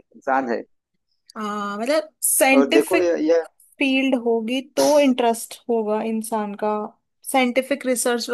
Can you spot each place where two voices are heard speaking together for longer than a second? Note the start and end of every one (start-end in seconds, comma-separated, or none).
none